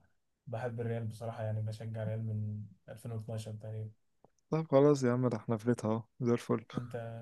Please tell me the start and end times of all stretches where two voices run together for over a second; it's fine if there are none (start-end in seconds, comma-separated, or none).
none